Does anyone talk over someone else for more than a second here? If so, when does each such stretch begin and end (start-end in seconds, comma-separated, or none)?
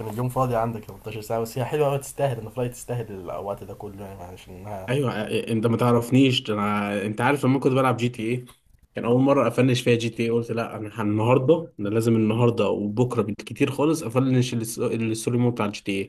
none